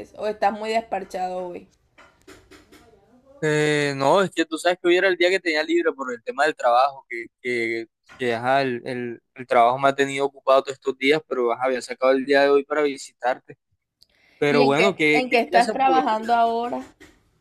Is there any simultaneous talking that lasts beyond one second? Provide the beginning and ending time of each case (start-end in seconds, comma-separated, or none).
14.5-16.0